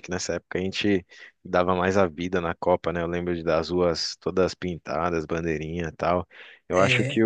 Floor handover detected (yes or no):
no